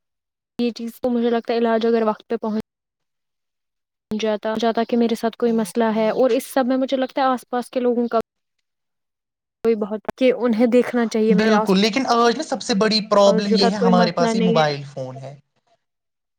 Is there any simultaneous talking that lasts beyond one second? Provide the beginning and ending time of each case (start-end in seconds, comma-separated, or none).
13.2-14.8